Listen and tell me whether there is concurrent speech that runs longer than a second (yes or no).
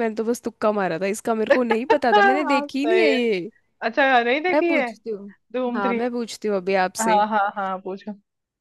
yes